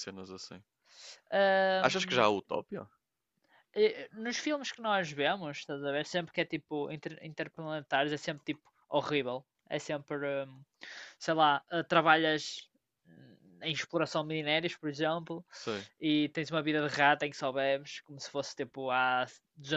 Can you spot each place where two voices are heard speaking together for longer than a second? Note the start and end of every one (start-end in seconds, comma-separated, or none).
none